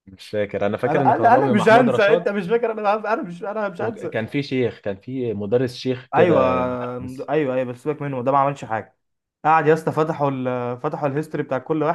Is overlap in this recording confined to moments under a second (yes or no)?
no